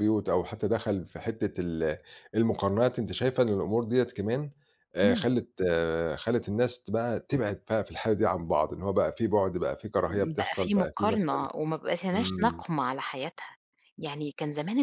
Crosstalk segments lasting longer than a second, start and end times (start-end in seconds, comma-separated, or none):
10.1-11.5